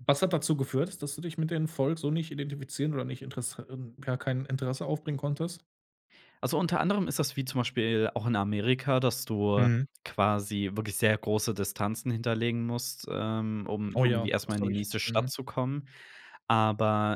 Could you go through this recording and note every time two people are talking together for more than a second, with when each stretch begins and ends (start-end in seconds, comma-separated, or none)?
13.9-15.3